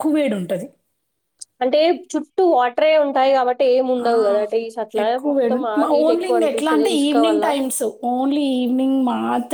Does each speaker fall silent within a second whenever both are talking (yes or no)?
no